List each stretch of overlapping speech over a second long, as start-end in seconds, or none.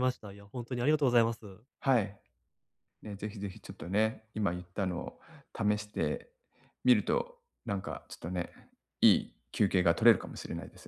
none